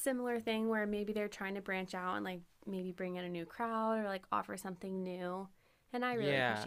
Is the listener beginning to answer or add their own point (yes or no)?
yes